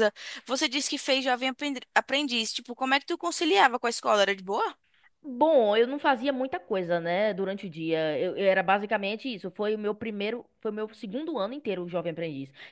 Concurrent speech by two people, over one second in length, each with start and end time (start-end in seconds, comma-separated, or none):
none